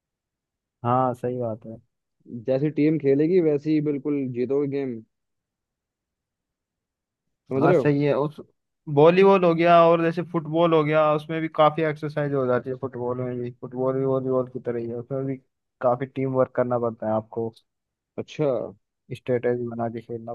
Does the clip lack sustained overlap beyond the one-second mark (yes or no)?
yes